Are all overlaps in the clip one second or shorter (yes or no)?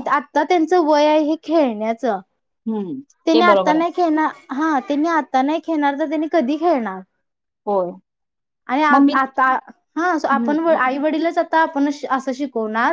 yes